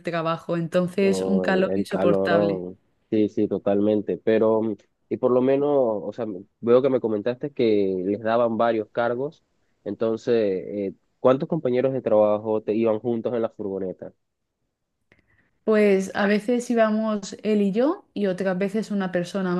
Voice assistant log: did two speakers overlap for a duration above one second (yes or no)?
yes